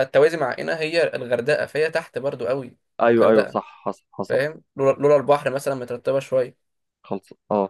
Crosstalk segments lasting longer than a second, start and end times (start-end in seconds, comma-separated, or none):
none